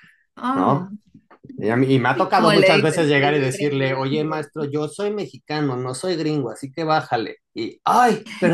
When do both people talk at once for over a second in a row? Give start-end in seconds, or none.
2.4-3.9